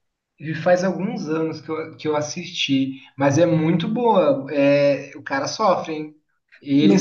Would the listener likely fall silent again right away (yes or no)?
no